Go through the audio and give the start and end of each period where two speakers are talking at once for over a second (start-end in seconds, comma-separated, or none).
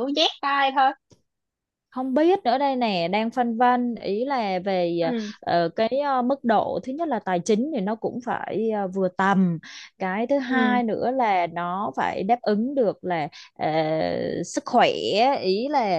none